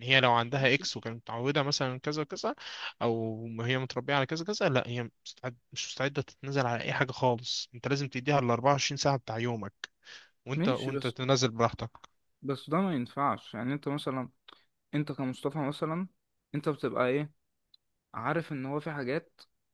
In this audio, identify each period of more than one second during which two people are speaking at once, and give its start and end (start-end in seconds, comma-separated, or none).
none